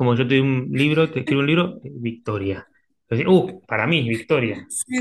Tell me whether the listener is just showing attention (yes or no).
no